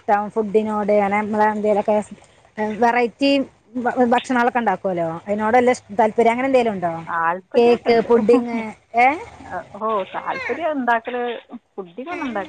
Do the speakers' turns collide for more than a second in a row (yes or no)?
no